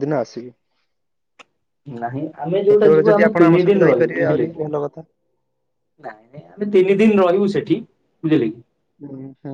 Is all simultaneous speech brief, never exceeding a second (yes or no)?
no